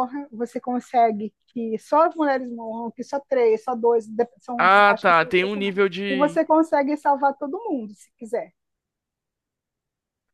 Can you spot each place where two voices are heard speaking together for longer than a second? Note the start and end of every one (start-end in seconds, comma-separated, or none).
4.6-6.4